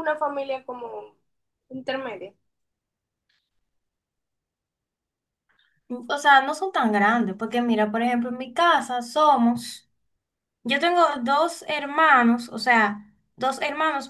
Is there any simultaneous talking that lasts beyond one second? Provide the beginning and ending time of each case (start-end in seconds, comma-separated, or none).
none